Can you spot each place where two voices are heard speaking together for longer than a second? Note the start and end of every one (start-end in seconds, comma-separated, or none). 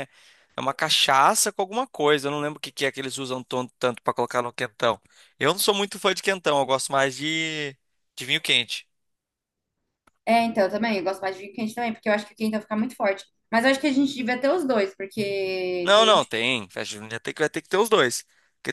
none